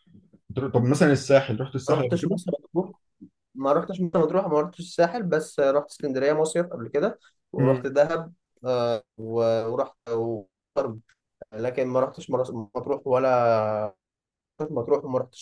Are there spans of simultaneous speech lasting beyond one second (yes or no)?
no